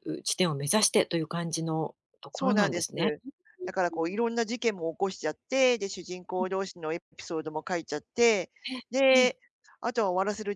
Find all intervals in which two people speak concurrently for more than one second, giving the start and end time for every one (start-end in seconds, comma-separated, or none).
none